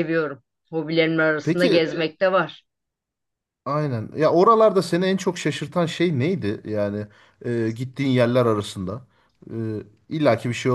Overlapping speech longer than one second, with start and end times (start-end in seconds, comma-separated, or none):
none